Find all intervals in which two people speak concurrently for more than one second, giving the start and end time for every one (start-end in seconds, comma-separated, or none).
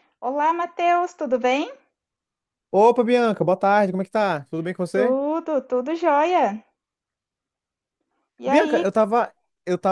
none